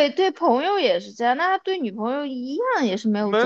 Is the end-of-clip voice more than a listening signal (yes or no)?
yes